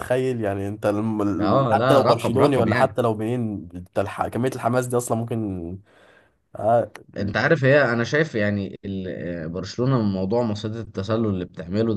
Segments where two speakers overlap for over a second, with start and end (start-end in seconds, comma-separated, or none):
1.4-3.0